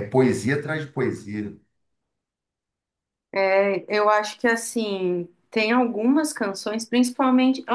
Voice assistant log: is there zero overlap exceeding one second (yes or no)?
yes